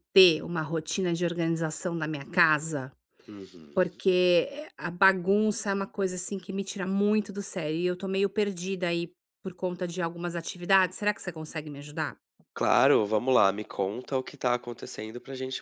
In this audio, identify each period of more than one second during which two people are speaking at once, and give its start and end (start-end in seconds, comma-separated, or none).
none